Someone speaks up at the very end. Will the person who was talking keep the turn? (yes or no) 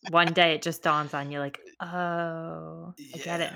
no